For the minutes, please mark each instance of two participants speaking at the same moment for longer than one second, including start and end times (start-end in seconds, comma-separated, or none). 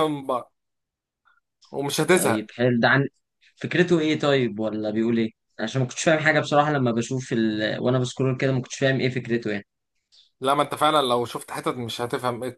none